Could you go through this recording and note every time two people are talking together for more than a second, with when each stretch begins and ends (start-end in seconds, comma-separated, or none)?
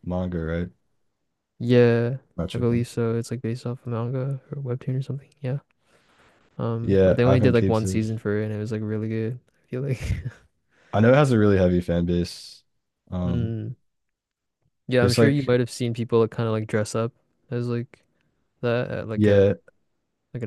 6.8-8.0